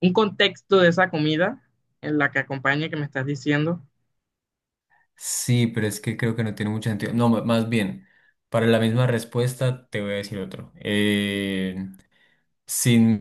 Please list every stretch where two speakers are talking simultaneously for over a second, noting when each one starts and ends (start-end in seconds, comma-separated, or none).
none